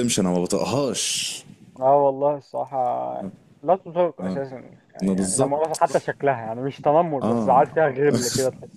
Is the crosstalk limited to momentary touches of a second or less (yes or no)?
yes